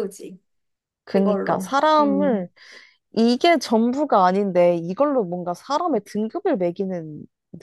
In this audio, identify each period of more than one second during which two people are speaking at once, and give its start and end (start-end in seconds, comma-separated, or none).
1.1-2.5